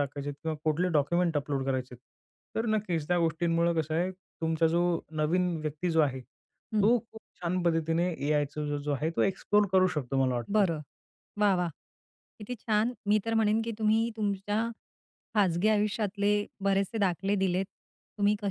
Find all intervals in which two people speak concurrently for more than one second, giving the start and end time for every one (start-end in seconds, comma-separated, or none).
none